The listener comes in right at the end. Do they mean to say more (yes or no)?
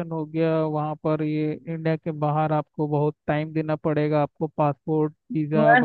yes